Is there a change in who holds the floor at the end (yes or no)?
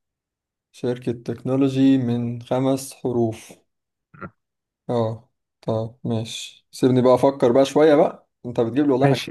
yes